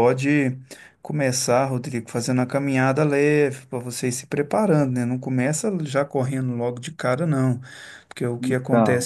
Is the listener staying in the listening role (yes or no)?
yes